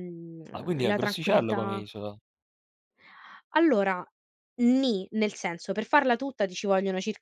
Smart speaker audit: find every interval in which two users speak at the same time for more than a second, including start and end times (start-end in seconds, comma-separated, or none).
0.5-1.8